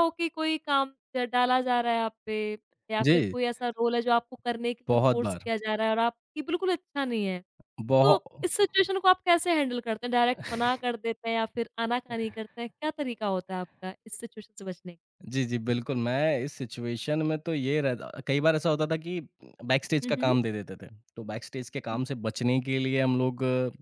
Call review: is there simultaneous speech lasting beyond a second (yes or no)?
no